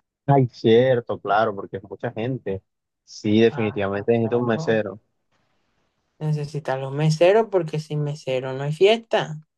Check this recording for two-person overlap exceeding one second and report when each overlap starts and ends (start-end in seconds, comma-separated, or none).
3.5-4.8